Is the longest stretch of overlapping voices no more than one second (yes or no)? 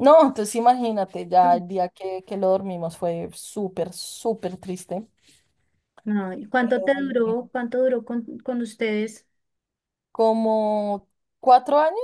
yes